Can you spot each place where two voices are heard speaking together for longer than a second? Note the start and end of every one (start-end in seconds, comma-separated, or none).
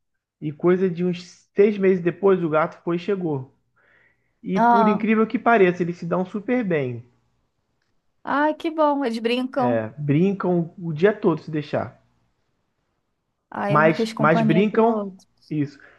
13.7-15.1